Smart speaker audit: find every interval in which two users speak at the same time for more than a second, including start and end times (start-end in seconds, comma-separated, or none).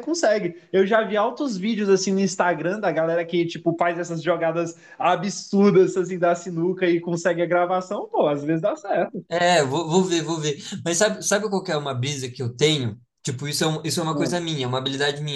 none